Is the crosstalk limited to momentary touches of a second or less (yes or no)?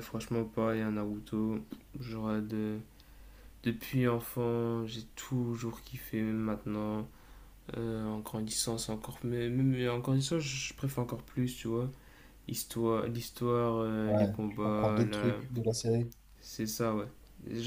no